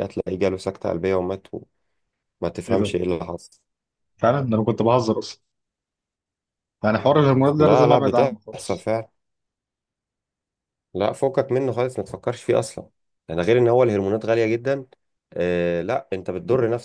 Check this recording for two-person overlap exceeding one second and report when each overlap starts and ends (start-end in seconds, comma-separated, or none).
7.6-8.9